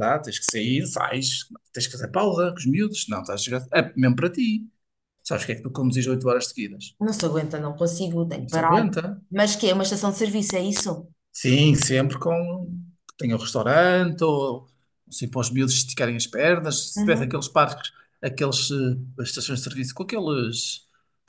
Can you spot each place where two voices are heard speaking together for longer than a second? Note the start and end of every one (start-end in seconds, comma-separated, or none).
none